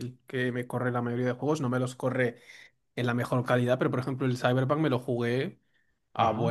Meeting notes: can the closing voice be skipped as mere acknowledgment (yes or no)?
yes